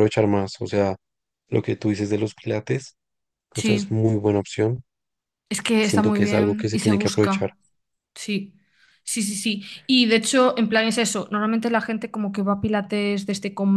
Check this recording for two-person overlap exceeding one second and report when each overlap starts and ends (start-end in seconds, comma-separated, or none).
5.8-7.5